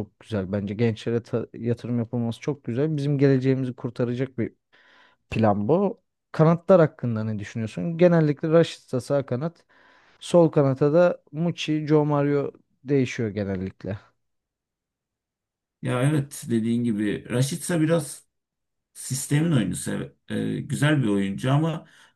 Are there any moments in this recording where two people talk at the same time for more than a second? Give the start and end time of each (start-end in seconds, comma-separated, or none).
none